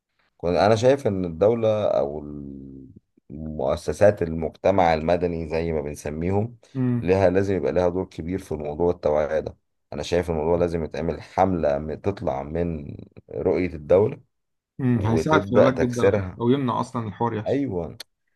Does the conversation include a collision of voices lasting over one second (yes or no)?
yes